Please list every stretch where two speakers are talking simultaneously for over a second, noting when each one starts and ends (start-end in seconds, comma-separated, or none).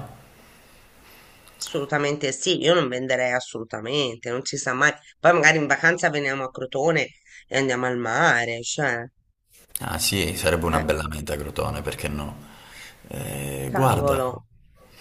none